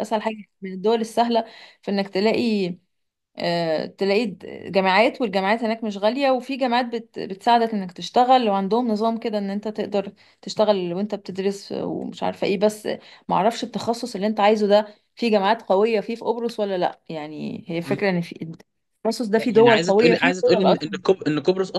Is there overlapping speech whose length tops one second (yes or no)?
yes